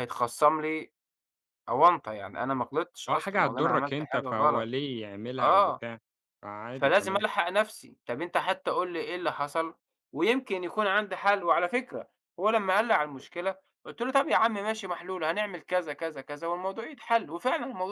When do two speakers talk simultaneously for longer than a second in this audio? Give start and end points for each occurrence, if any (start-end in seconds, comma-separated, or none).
3.1-4.7